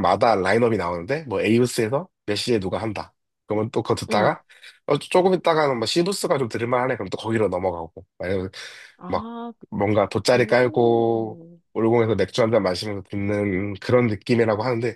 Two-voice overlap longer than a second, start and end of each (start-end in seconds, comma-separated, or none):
10.3-11.6